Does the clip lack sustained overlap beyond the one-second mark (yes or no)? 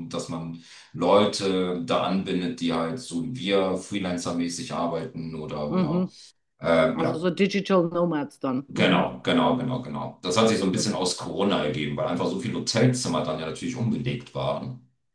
yes